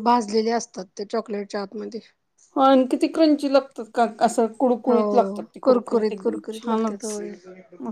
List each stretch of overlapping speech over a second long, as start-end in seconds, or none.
4.8-7.3